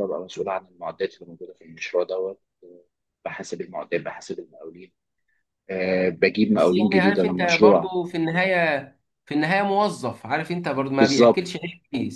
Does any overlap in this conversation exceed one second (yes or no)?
yes